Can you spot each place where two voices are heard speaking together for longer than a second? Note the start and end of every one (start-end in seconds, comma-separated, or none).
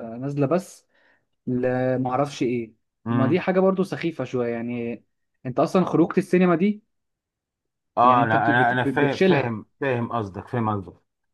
8.0-9.6